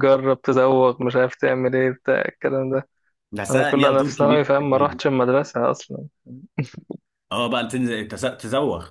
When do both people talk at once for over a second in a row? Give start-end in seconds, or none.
3.5-5.0